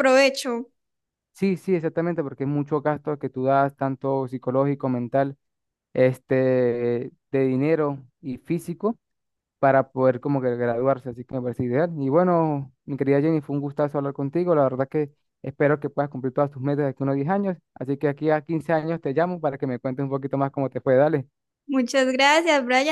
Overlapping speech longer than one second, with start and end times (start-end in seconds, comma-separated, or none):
none